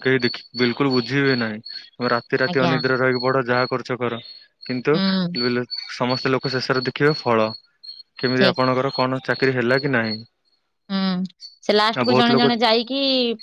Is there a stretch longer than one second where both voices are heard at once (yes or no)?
no